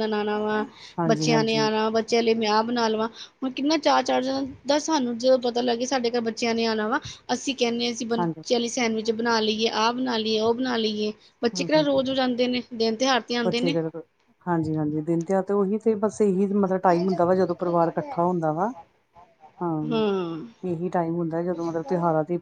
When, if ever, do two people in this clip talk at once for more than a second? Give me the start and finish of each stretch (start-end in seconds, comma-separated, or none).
none